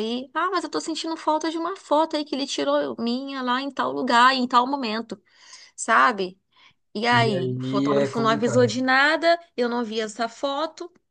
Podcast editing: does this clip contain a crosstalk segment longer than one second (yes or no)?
yes